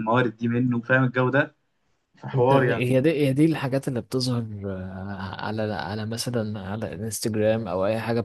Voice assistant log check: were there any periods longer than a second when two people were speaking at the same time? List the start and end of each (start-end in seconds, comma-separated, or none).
none